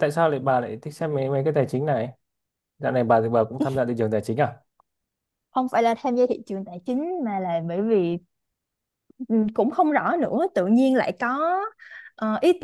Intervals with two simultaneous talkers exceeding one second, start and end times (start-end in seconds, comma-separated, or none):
none